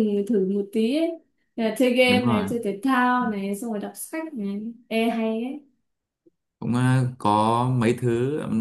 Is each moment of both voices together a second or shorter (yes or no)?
yes